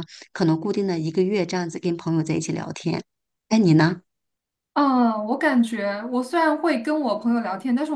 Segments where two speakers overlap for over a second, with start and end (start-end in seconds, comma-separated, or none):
none